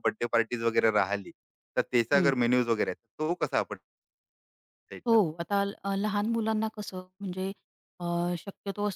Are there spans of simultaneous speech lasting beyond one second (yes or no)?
no